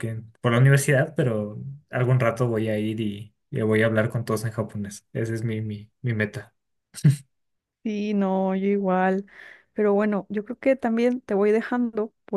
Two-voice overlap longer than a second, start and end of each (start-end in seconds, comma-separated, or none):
none